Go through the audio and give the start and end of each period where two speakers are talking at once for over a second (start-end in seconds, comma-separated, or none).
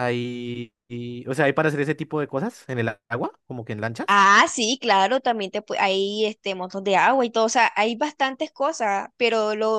none